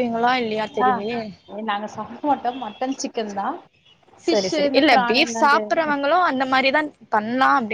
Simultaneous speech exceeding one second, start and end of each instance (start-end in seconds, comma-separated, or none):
4.3-5.9